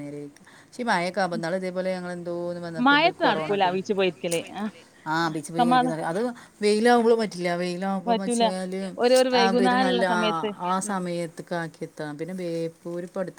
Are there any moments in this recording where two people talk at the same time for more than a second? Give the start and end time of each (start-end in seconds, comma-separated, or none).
none